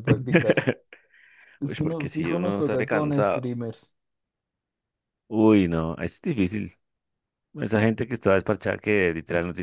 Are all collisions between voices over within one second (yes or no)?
no